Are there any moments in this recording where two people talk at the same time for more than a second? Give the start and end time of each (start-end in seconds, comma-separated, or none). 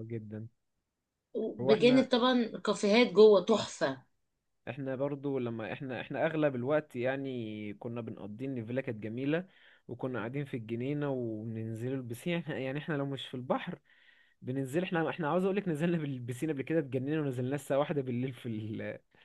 none